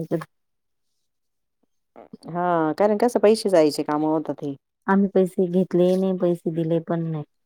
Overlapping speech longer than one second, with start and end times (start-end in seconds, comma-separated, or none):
none